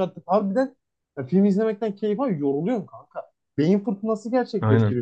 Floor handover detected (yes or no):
yes